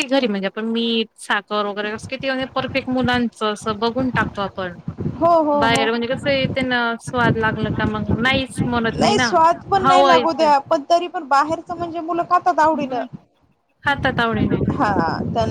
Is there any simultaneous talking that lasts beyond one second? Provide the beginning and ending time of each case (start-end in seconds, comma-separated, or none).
none